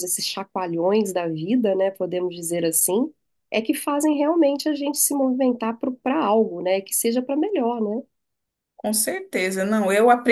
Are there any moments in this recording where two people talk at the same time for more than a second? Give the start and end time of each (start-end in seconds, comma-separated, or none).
none